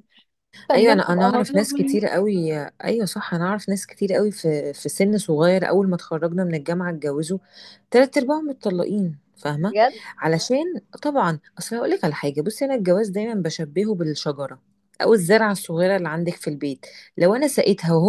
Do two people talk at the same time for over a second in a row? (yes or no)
yes